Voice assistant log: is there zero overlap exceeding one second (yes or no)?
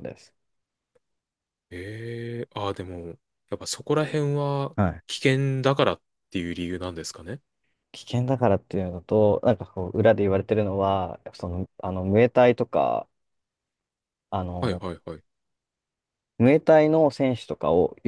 yes